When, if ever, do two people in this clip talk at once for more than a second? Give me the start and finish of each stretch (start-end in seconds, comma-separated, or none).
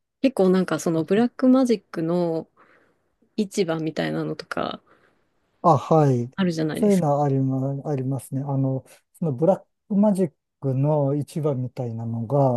none